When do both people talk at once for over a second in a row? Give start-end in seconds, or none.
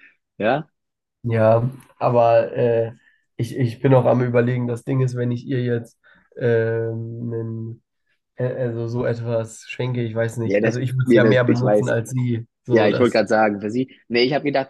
10.4-11.9